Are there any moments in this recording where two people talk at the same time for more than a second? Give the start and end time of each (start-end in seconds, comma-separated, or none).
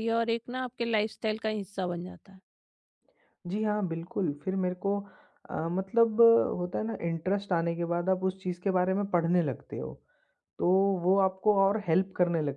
none